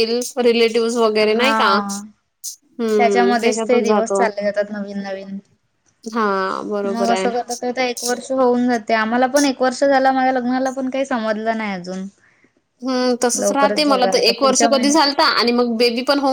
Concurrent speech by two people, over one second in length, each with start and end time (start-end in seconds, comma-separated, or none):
3.0-4.2, 13.4-15.1